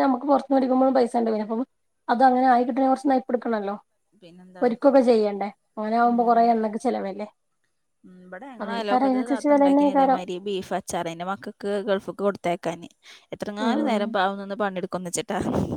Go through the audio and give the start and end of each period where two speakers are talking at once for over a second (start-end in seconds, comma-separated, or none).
8.6-10.2